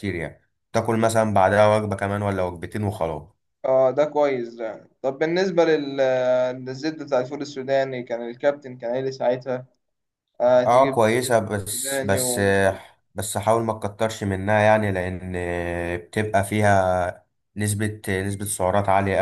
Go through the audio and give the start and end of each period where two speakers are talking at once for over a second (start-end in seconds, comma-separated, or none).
10.5-12.4